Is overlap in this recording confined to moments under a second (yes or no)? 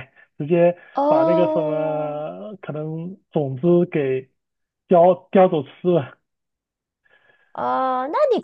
no